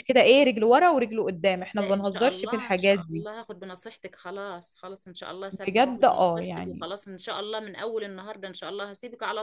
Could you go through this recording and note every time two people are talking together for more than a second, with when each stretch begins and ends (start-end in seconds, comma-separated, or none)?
1.8-3.2, 5.5-6.9